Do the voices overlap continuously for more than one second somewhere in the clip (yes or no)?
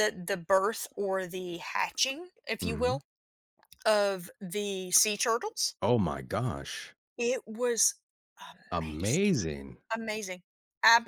no